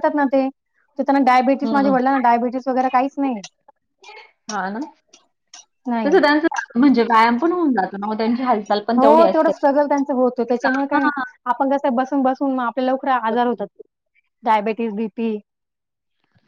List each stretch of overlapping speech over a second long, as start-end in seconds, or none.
none